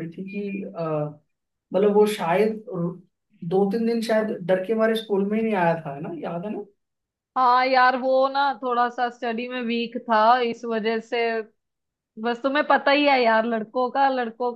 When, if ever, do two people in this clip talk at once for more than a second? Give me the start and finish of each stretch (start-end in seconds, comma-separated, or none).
none